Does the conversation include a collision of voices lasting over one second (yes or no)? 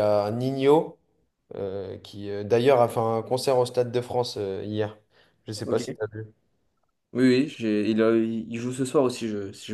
no